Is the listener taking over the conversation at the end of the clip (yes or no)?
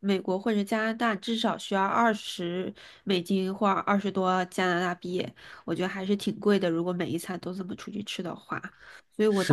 yes